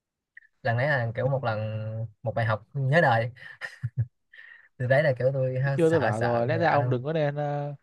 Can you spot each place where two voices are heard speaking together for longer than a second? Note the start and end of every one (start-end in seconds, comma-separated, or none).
5.6-7.0